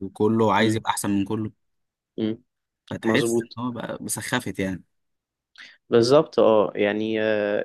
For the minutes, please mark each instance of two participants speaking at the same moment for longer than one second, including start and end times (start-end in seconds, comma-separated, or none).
none